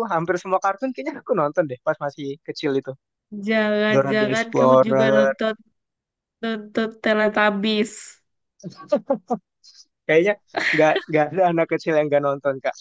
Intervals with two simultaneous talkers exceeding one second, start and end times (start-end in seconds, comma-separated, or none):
3.9-5.3